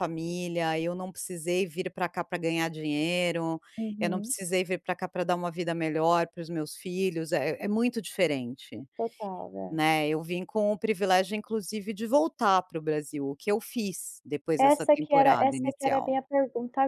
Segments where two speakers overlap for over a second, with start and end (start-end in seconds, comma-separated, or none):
14.6-16.2